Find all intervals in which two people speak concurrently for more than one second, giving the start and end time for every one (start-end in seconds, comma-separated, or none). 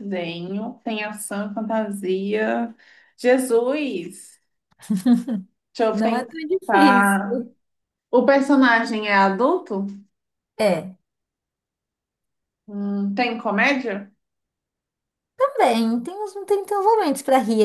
5.9-7.5